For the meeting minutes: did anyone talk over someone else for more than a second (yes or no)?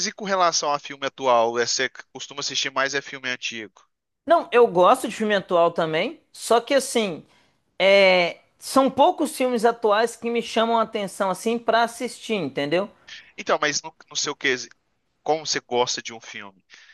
no